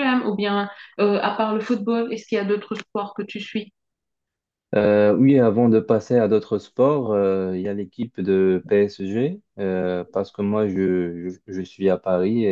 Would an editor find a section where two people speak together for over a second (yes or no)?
no